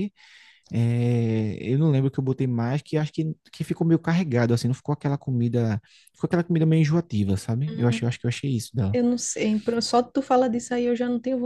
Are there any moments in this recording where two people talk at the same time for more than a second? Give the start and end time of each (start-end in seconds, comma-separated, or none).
none